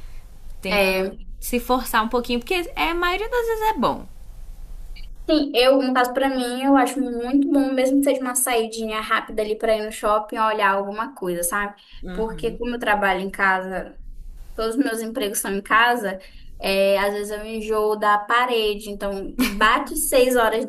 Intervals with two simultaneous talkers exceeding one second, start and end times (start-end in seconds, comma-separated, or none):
none